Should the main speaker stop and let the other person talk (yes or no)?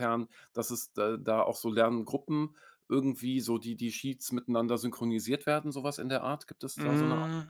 yes